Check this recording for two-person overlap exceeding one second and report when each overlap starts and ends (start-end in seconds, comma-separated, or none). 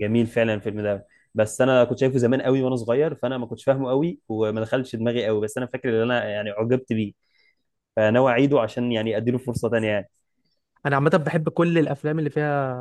none